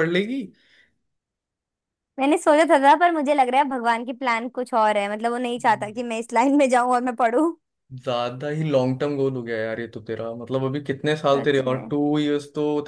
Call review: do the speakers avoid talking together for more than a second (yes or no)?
yes